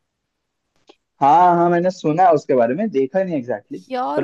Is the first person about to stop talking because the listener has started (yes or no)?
yes